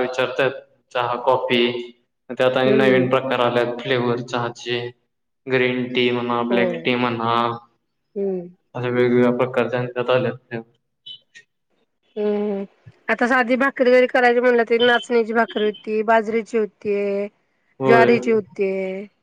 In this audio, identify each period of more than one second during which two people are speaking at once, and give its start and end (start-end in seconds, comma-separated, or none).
none